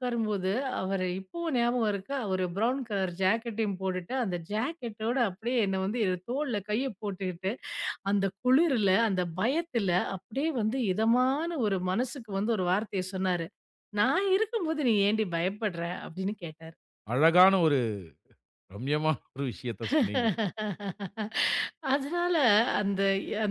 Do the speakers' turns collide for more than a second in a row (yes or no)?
no